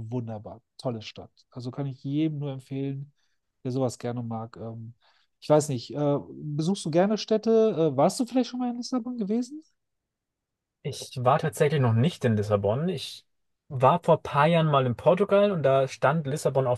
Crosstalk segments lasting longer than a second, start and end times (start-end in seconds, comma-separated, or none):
none